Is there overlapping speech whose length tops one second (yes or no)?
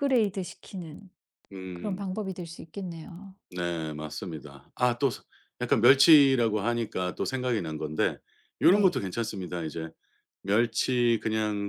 no